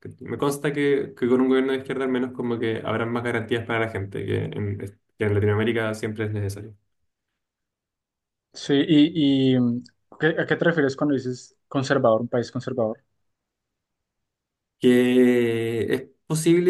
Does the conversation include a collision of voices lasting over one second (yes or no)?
no